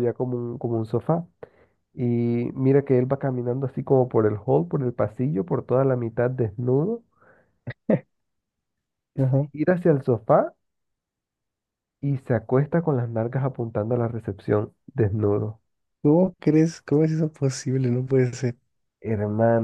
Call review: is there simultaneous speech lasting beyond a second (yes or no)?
no